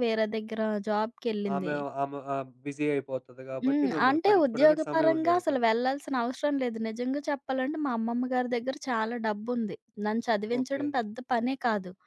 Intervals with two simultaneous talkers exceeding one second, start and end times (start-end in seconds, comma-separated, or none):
3.6-5.6